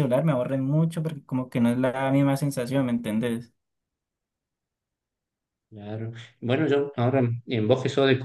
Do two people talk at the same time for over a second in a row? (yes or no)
no